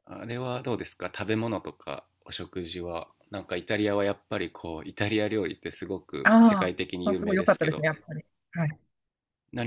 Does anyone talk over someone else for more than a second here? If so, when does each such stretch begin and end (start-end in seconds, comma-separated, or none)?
6.2-7.9